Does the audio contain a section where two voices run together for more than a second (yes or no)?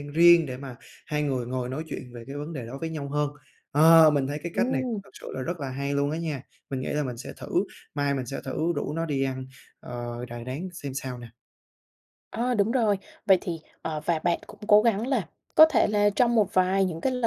no